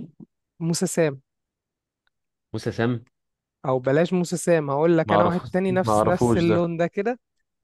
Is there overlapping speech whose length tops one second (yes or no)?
yes